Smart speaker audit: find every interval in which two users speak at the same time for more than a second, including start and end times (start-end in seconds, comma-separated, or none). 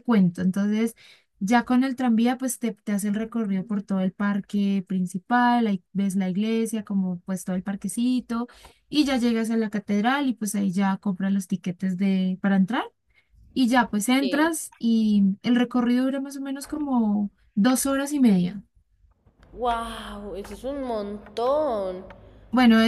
none